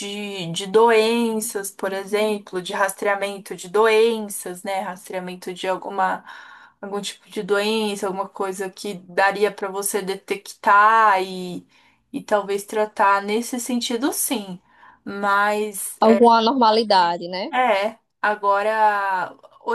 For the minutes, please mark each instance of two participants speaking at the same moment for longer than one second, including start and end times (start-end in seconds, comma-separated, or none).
none